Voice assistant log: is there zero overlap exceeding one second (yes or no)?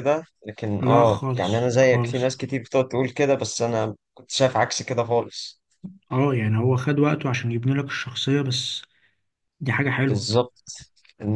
no